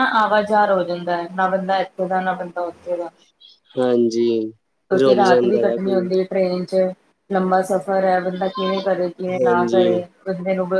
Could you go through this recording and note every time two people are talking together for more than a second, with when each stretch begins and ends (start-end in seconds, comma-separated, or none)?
none